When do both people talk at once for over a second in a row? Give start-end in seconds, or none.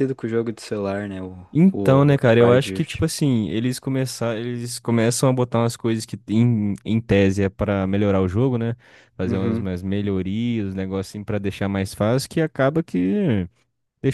1.7-3.0